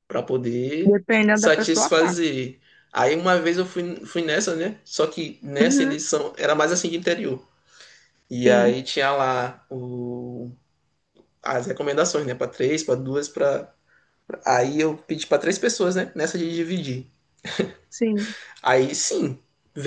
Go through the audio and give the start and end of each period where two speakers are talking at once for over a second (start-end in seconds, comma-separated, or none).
0.8-2.3